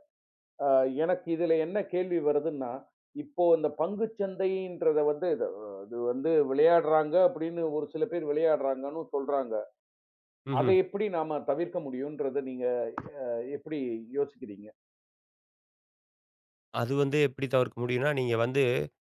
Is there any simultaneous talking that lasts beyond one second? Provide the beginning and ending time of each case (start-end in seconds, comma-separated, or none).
none